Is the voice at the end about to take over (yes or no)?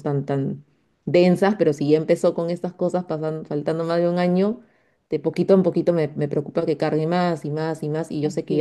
no